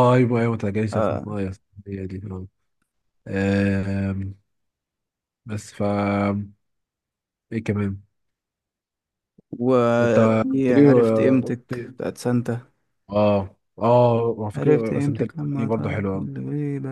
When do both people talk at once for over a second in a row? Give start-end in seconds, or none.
10.0-11.9, 14.6-16.3